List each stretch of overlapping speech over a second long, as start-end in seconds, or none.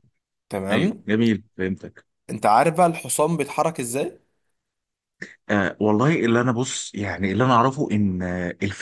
none